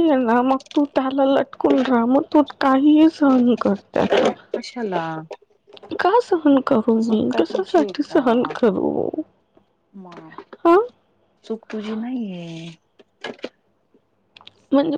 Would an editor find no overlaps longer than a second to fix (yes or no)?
no